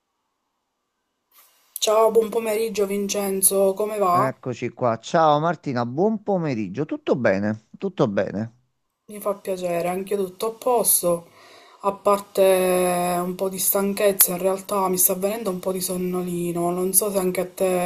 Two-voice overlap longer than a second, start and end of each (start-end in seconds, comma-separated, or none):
none